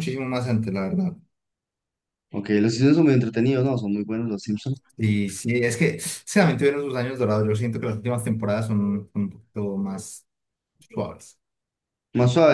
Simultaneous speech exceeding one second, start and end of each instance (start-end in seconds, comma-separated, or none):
none